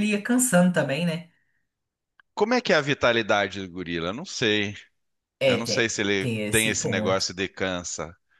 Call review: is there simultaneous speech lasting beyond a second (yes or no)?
yes